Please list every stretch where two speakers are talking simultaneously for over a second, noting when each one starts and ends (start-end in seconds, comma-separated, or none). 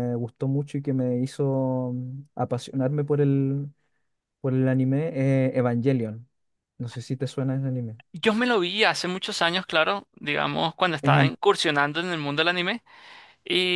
none